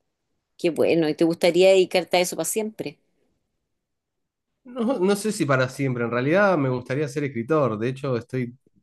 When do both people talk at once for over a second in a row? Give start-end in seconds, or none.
none